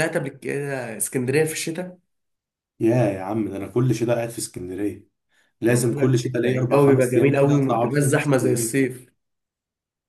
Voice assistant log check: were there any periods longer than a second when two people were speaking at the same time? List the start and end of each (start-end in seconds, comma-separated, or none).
5.7-8.9